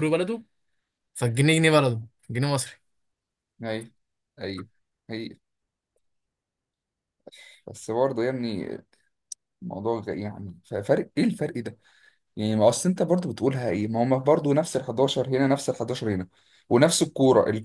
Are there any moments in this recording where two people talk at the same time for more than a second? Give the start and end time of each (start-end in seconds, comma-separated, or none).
none